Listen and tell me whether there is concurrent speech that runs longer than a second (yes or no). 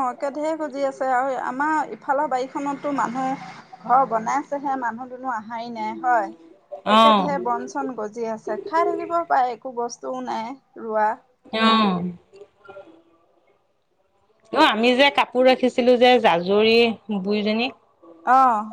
no